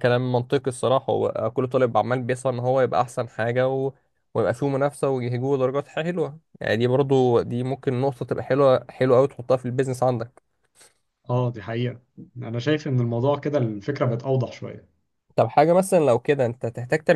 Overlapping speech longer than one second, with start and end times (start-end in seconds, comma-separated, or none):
none